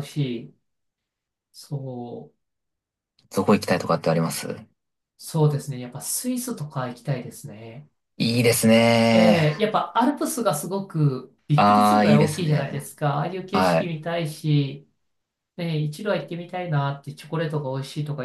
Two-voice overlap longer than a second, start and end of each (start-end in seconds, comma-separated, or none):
11.6-12.8